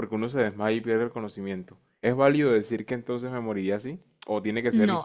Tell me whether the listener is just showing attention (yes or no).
no